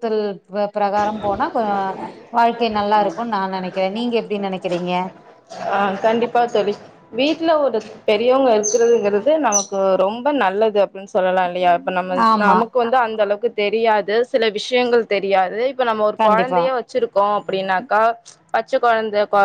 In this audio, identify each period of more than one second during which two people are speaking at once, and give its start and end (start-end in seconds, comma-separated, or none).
none